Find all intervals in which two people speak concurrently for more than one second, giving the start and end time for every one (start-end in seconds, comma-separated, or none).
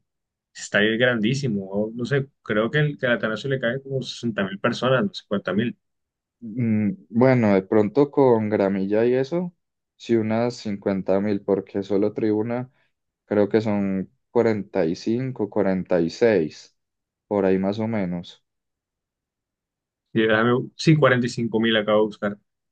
none